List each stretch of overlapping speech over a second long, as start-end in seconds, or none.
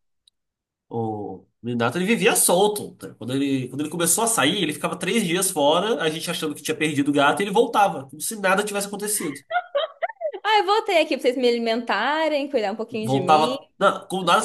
none